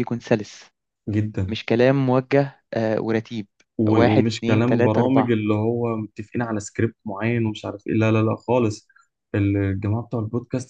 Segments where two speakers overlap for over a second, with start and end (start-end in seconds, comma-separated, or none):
3.9-5.3